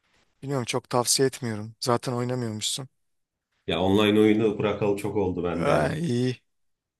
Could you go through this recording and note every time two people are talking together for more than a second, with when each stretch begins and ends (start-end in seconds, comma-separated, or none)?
none